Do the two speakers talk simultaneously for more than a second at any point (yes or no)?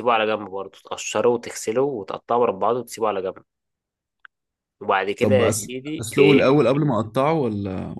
yes